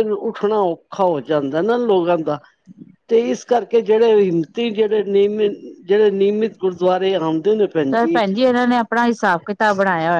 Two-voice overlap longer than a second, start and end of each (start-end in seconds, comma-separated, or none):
none